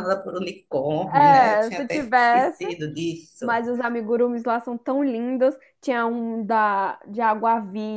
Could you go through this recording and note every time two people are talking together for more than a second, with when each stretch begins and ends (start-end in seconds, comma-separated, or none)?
1.1-2.6